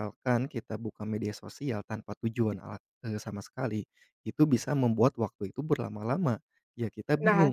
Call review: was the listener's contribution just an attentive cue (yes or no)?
no